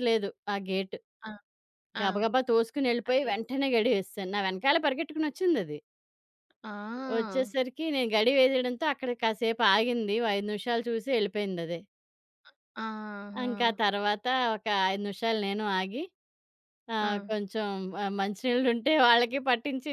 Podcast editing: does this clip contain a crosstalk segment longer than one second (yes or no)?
no